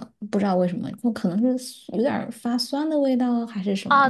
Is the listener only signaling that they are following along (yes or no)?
no